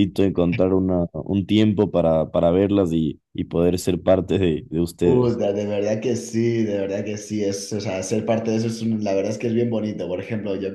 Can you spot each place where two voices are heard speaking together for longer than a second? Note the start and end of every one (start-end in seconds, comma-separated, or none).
none